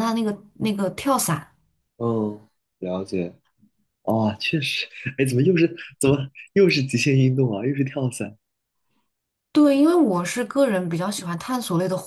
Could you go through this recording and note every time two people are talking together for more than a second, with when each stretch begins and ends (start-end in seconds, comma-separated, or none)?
none